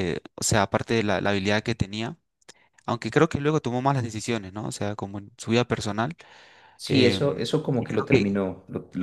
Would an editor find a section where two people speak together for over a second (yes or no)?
yes